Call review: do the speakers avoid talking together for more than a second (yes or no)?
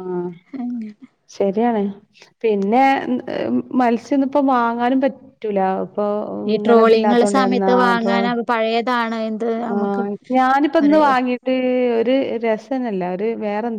no